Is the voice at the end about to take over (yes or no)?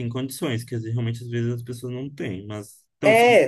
yes